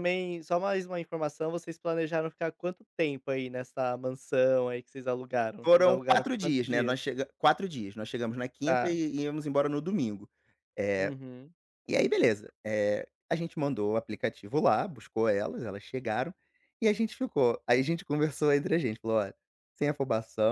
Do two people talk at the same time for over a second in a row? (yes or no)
yes